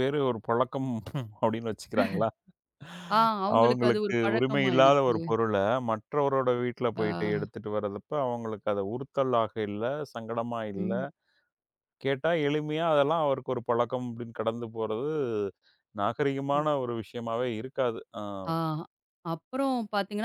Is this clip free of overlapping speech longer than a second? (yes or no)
no